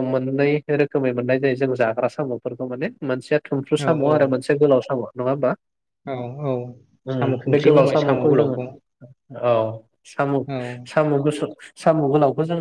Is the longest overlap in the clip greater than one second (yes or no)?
yes